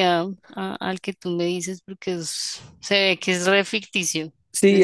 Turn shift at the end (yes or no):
yes